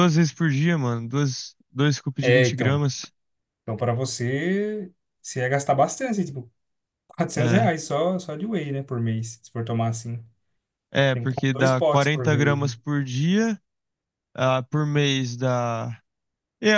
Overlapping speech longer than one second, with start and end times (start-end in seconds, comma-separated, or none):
11.1-12.7